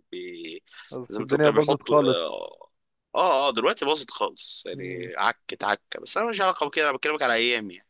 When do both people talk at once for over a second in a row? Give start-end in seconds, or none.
1.1-2.3